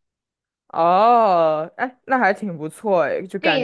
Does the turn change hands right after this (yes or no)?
yes